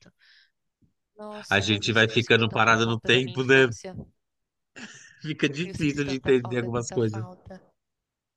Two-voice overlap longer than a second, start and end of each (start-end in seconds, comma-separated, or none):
1.5-3.7, 5.7-7.2